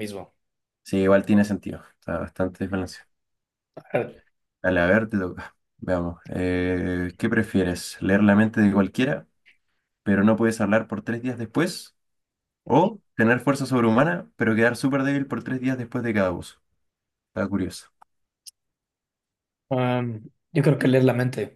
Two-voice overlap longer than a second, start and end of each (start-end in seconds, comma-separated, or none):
none